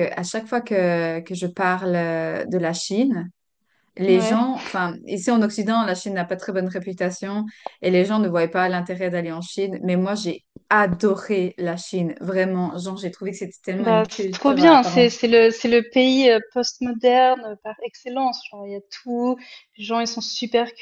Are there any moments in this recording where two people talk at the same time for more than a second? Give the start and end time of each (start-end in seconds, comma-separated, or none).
13.8-15.1